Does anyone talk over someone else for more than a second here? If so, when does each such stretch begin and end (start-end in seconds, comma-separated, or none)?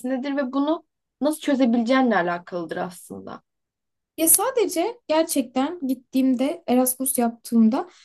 none